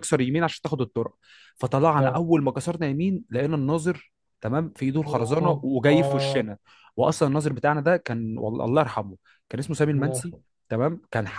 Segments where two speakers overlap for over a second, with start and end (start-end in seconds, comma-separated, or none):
5.0-6.5